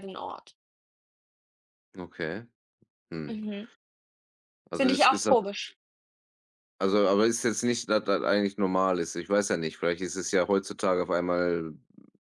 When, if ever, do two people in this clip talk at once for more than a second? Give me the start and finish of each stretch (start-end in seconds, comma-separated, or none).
none